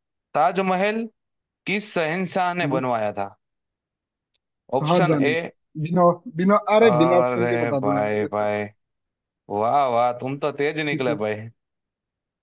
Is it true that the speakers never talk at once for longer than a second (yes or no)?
no